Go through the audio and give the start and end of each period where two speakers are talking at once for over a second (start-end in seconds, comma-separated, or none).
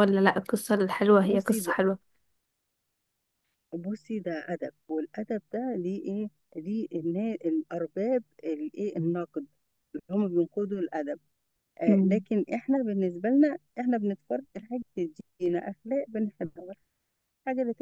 none